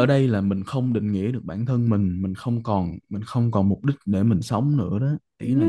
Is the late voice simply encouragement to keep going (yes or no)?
no